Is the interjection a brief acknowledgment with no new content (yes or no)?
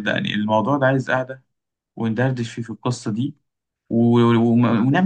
yes